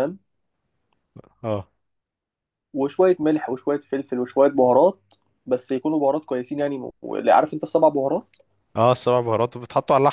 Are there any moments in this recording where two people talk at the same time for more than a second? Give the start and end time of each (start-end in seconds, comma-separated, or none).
none